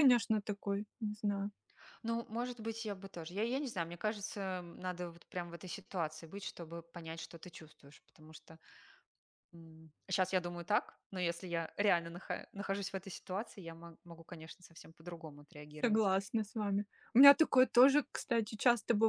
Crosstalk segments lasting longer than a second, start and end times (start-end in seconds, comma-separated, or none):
none